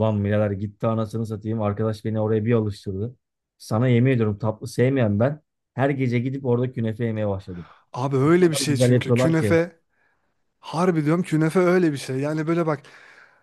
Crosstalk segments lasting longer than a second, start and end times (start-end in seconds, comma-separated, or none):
8.2-9.6